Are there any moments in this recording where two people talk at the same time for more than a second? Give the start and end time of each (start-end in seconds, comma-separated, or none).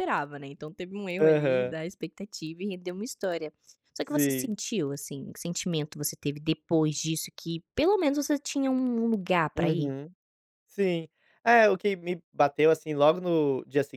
none